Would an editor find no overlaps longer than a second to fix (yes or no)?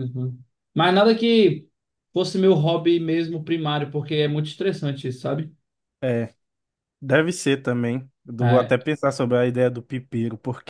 yes